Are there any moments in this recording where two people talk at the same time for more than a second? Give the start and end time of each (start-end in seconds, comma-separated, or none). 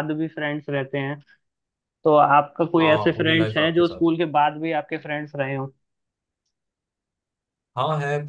2.8-4.0